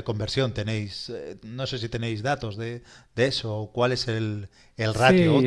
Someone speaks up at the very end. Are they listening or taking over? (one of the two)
taking over